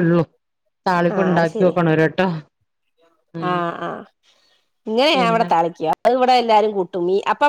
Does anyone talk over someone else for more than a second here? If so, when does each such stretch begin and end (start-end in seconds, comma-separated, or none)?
none